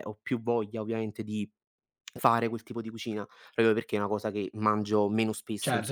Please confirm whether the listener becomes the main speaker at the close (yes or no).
yes